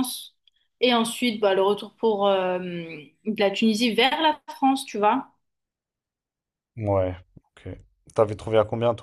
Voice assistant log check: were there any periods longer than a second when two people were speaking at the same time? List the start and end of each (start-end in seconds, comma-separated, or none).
none